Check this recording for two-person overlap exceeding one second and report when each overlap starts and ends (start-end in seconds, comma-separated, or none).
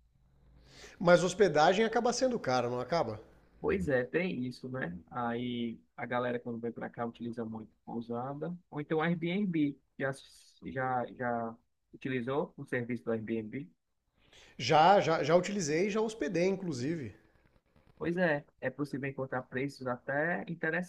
none